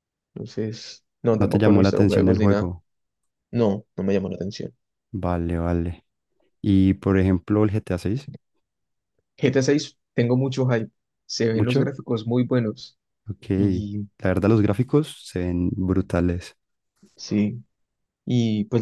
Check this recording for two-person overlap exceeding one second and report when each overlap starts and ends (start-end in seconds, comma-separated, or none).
1.4-2.7